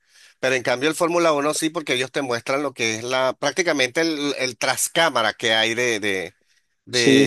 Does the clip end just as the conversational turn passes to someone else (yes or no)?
no